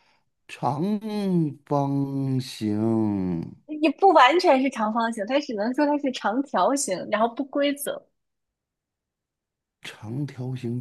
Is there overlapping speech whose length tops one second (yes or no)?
no